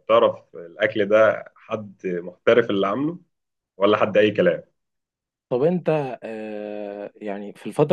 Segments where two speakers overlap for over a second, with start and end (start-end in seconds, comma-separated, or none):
none